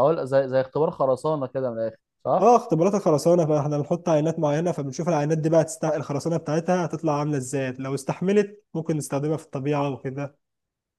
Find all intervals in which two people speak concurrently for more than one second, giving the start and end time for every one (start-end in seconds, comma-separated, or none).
none